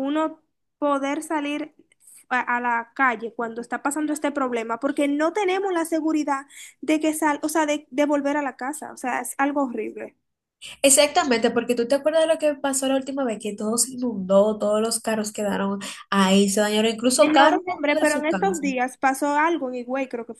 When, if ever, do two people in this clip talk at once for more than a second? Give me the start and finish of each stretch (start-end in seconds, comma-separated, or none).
17.2-18.6